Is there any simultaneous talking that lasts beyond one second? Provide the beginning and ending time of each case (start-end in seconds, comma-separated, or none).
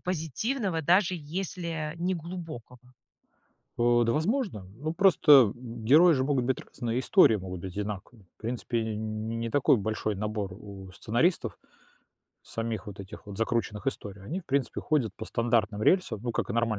none